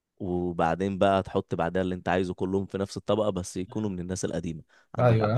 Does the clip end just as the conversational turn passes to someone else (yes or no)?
yes